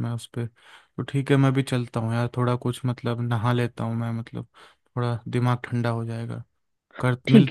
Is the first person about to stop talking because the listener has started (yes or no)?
yes